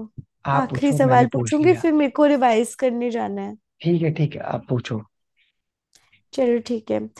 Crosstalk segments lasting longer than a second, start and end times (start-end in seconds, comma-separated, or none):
0.6-1.8